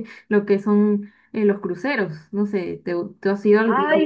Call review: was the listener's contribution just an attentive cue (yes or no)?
no